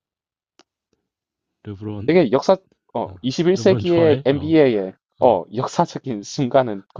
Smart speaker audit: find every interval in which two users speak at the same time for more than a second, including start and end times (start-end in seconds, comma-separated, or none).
3.0-4.5